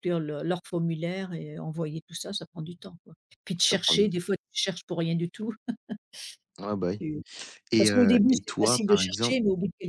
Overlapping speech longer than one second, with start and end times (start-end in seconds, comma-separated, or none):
7.8-9.4